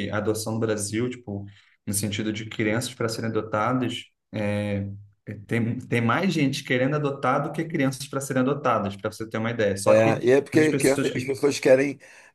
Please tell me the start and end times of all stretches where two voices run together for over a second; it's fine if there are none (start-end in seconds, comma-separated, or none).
9.9-11.4